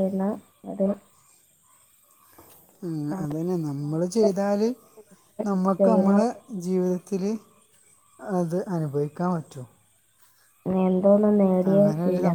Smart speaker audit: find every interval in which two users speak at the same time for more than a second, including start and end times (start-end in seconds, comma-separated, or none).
3.1-4.7